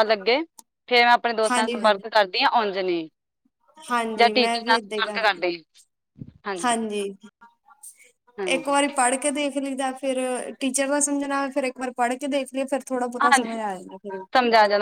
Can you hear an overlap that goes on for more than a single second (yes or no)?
yes